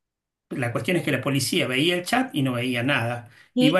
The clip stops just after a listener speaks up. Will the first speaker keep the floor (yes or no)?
yes